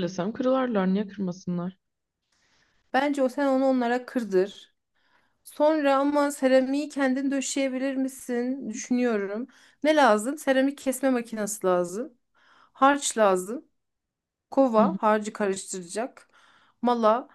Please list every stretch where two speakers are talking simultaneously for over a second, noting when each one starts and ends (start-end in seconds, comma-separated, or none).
none